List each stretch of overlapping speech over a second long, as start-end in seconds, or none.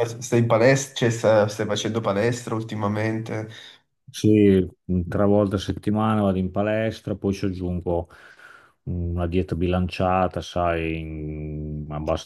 none